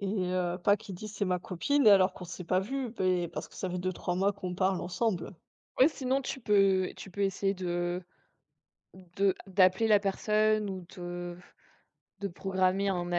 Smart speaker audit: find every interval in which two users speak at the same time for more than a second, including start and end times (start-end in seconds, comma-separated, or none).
none